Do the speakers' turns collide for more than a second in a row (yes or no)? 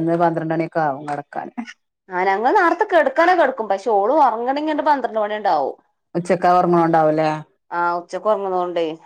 no